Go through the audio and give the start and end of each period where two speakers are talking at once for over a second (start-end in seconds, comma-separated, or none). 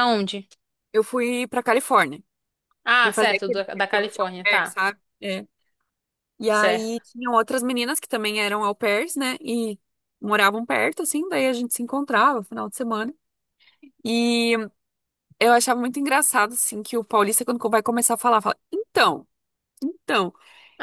3.0-4.8